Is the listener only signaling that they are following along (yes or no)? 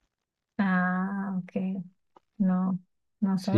no